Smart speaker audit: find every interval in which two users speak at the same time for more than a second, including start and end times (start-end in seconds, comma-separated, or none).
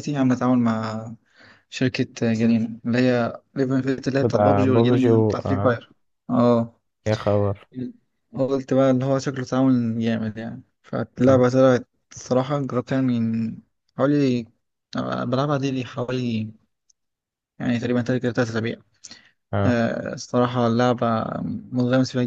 4.2-5.8